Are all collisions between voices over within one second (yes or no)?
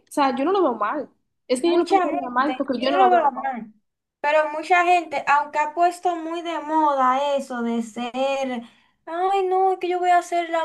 no